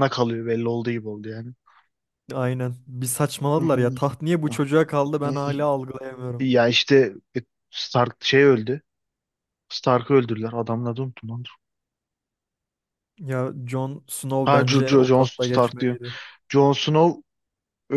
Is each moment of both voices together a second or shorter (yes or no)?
no